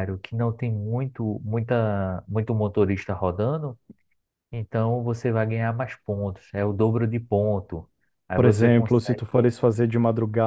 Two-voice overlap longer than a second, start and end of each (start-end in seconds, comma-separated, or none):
8.3-9.5